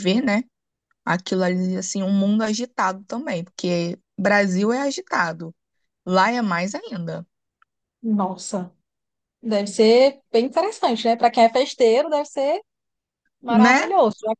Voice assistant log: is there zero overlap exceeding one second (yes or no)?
yes